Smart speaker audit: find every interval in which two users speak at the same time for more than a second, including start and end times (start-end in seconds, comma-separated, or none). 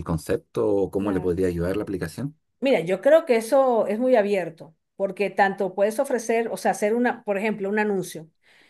none